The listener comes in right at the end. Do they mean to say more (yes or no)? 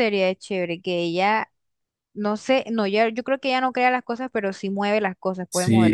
yes